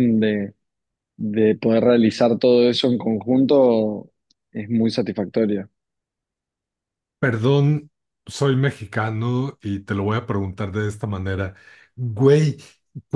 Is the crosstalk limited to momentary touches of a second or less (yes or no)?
yes